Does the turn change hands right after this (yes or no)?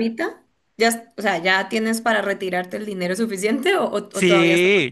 yes